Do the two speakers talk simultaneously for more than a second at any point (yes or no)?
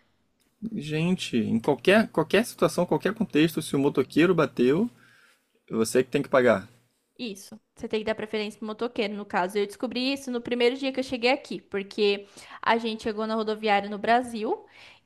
no